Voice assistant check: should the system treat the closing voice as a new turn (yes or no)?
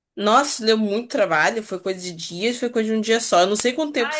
yes